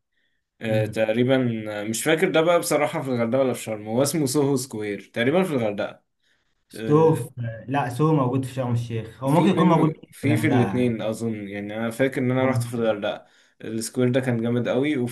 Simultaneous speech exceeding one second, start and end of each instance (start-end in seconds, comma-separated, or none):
9.3-11.0